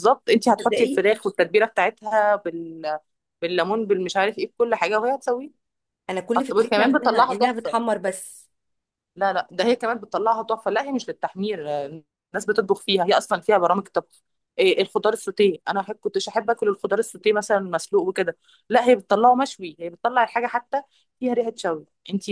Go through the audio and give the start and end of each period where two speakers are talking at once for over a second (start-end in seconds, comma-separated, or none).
6.4-7.8